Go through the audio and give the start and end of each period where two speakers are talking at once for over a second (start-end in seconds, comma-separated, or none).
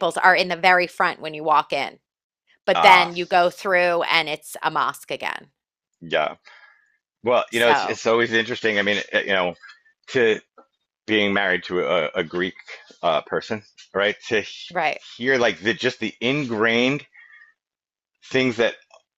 none